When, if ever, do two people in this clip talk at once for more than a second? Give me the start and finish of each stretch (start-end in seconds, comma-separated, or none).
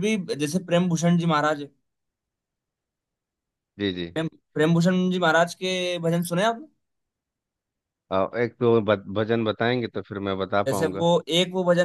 none